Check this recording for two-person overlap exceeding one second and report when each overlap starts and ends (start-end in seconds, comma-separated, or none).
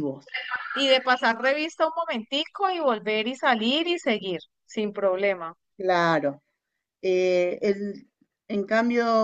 none